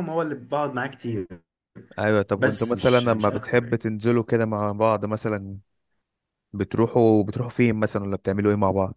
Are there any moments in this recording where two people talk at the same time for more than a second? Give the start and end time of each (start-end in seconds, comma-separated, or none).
2.3-3.8